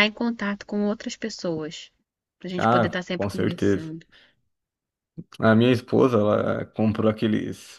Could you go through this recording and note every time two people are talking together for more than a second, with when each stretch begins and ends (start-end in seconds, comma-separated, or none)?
2.6-3.9